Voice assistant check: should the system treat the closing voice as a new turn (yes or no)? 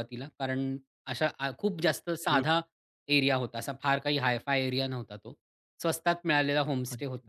no